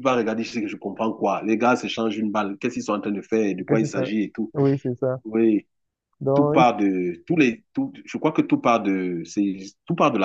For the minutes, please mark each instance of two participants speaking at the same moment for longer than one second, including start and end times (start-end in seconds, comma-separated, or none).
none